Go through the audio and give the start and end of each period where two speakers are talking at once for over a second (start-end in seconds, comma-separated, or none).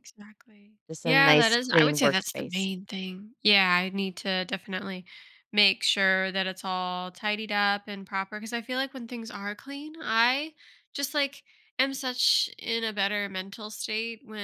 0.9-2.7